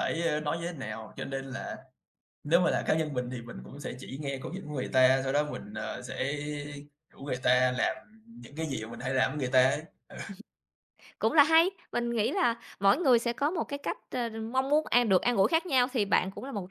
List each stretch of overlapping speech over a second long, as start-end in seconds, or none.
none